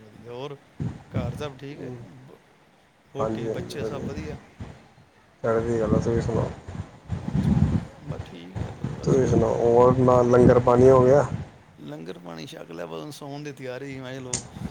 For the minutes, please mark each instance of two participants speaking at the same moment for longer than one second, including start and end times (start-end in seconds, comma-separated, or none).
none